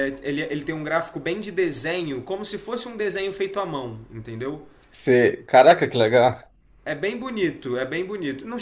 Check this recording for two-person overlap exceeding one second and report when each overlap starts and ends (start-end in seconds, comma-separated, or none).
none